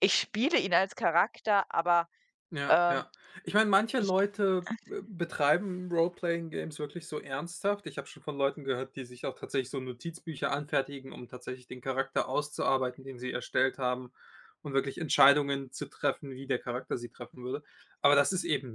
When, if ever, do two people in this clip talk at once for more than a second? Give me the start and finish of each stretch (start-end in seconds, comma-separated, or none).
none